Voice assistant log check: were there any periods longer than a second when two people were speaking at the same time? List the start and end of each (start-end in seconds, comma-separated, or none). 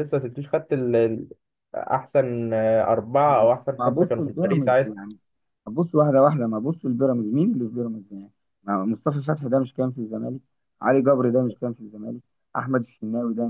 3.2-4.7